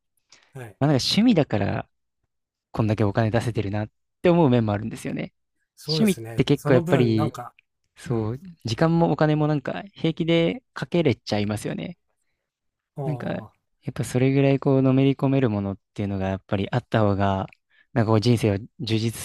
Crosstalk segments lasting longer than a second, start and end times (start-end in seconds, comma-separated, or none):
5.8-7.3